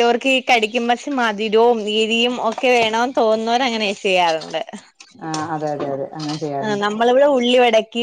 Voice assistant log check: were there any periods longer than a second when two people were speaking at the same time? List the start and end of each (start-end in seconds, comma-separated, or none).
none